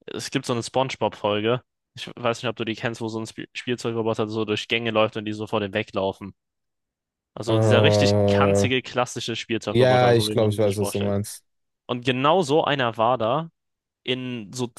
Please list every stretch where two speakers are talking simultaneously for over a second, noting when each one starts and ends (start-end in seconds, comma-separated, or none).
7.5-8.7, 9.7-11.2